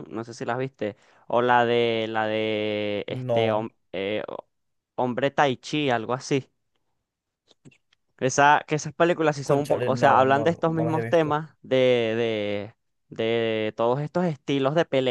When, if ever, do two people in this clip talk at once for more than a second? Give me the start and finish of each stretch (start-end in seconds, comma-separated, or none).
9.4-11.4